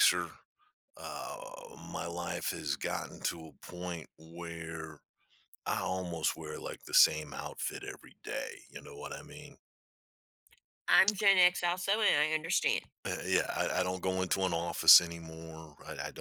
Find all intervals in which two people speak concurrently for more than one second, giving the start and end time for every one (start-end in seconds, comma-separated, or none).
none